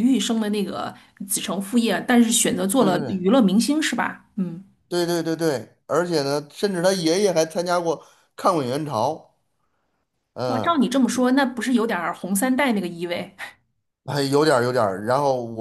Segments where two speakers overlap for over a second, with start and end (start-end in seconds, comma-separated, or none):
none